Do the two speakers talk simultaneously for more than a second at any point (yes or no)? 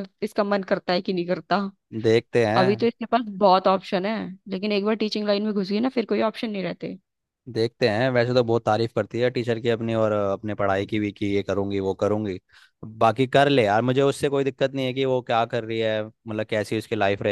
no